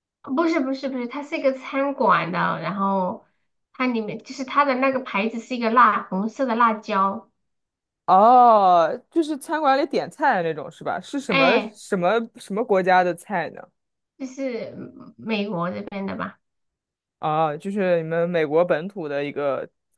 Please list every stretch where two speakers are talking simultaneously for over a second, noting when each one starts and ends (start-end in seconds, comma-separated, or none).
none